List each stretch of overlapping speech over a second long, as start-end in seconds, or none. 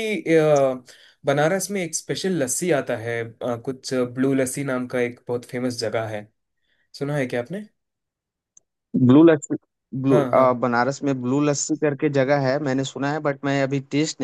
none